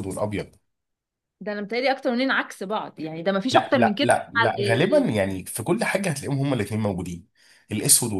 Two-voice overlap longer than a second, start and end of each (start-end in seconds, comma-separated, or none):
3.5-5.2